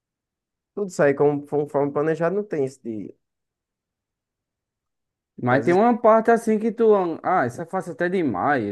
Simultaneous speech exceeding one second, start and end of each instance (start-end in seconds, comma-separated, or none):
none